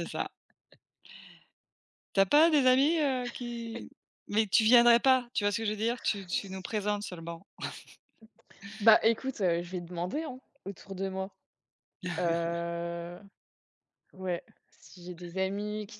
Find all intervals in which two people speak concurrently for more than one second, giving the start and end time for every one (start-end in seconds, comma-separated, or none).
none